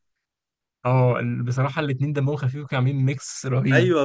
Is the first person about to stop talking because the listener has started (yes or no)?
no